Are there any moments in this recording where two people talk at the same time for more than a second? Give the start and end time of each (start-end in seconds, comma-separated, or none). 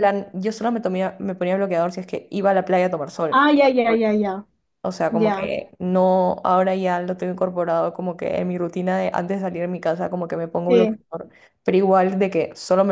none